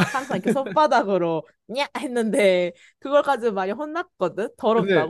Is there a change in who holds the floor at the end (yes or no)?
yes